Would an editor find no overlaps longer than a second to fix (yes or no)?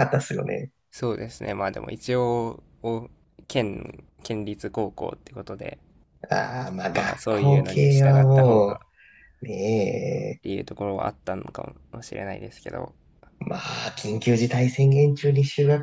no